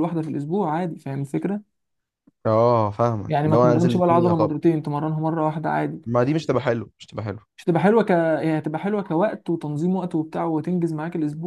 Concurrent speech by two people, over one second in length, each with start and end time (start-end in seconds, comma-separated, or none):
3.3-4.5